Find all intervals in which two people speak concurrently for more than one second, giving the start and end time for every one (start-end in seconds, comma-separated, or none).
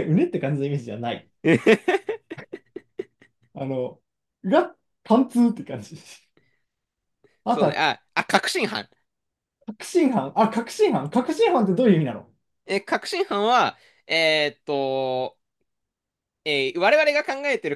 none